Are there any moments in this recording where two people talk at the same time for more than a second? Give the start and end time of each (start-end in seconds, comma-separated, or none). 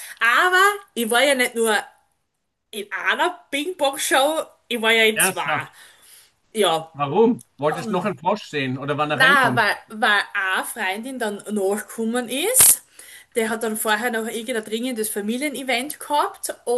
none